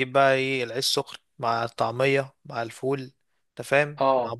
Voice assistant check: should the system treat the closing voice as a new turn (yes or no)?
no